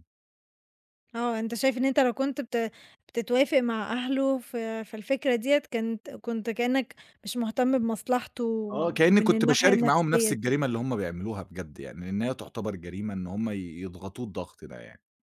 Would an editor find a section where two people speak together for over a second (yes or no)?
yes